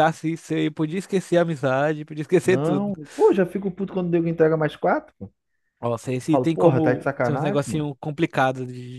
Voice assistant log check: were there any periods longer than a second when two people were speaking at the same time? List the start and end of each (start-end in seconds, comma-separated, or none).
6.2-7.9